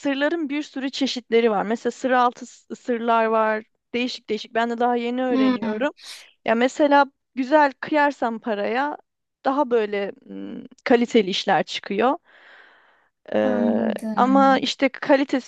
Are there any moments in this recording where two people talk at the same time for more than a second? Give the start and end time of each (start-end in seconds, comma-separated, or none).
13.4-14.7